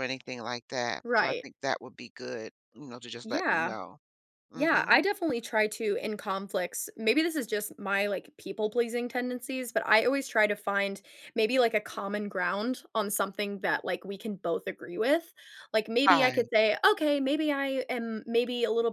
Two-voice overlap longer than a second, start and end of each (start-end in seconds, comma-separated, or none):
none